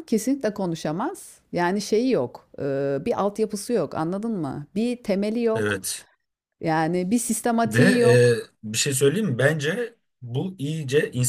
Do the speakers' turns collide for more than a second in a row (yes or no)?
no